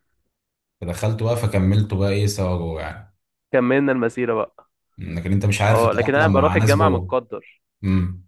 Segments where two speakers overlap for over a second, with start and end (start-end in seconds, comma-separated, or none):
5.7-7.1